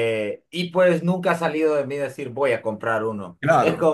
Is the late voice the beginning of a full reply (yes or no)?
no